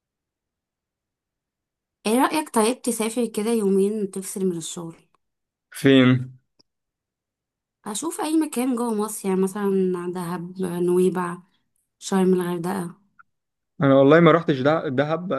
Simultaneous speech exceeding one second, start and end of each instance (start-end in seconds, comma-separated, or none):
none